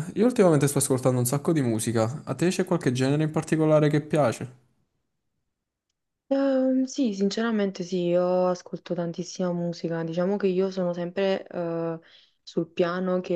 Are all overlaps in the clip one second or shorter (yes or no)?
yes